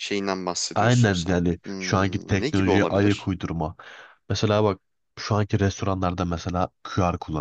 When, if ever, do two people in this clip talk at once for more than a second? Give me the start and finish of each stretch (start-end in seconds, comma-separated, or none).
0.8-3.3